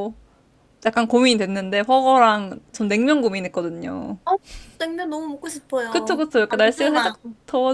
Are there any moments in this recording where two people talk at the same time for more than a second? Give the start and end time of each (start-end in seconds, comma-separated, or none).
5.9-7.2